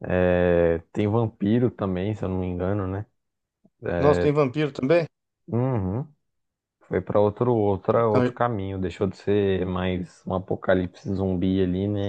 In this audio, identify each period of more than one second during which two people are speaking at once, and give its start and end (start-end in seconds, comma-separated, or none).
none